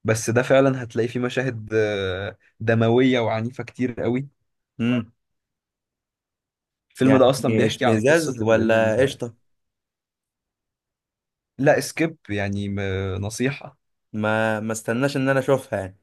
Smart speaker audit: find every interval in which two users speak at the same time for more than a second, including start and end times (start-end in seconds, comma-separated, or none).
7.0-9.2